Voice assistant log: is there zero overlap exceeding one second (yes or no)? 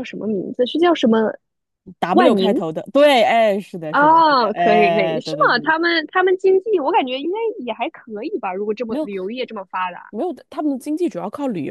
no